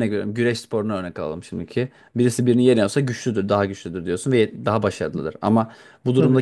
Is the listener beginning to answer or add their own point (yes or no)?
no